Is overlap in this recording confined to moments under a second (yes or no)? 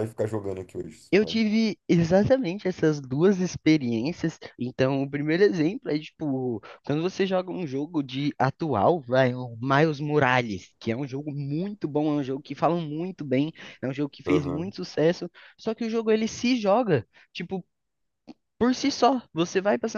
yes